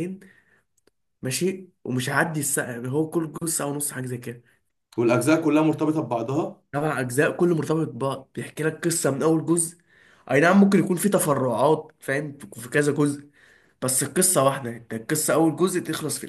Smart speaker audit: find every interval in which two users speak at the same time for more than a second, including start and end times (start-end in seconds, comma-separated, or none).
none